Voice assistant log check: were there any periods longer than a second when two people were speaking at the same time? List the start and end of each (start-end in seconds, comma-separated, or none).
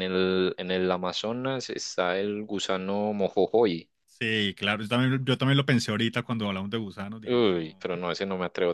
none